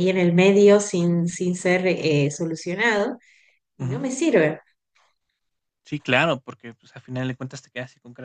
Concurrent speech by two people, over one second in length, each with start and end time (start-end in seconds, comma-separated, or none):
none